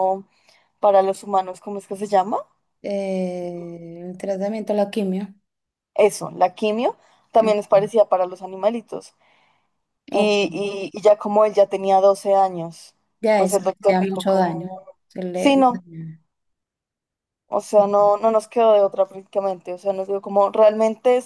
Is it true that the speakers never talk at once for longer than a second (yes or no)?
no